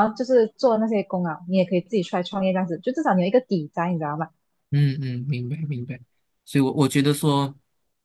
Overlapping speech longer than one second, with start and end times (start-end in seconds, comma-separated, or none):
none